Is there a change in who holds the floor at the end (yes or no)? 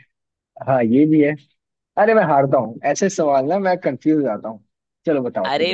yes